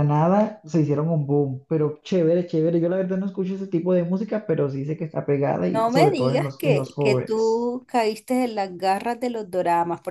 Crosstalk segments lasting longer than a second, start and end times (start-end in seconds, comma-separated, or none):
5.7-7.7